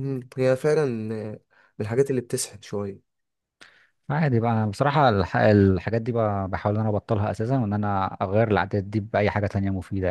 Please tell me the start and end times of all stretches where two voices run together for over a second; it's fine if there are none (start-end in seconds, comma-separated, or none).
none